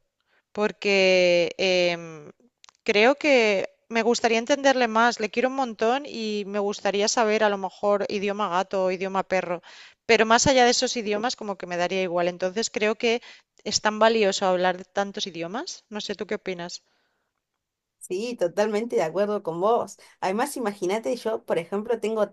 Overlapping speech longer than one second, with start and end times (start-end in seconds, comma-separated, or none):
none